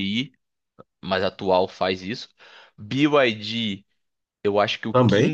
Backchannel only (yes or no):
yes